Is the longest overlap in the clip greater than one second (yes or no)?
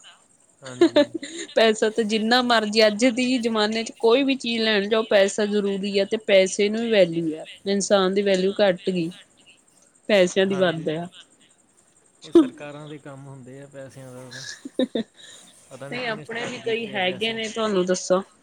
yes